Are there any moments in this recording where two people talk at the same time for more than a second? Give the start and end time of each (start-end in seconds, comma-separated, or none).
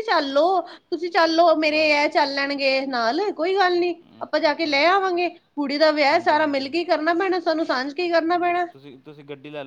none